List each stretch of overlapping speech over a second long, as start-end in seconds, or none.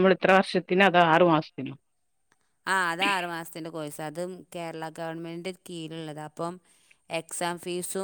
none